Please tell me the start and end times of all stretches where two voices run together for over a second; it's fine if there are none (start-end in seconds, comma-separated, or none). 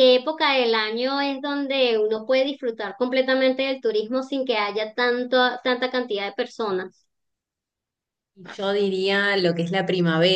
none